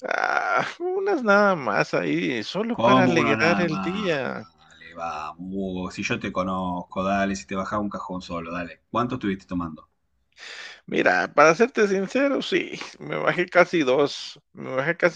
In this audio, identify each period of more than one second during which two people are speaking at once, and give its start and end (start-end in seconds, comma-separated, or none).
2.7-4.2